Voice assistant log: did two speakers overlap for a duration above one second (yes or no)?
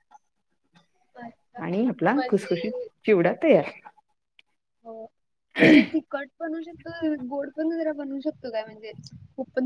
no